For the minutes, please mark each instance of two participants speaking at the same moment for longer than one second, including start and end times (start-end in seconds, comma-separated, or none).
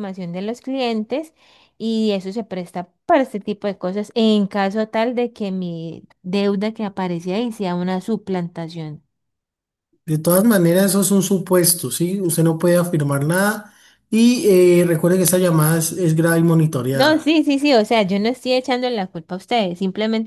none